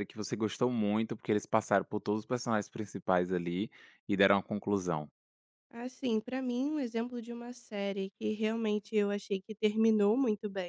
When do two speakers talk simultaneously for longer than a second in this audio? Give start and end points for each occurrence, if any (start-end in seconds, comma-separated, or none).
none